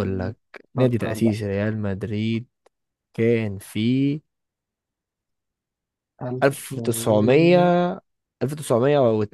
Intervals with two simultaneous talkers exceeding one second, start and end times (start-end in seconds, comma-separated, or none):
6.4-7.7